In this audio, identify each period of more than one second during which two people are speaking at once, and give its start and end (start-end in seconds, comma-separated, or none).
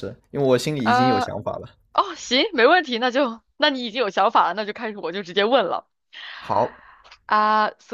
none